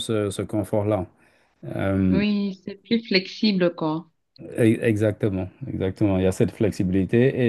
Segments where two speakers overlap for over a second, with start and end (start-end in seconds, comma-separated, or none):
none